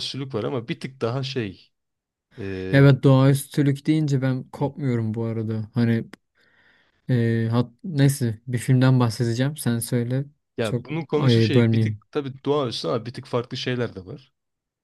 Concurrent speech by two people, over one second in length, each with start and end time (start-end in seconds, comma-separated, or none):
10.6-12.0